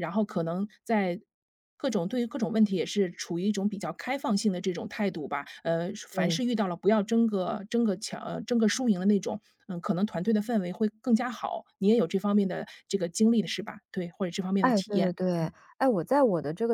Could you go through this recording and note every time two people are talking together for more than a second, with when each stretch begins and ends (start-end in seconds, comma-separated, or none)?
none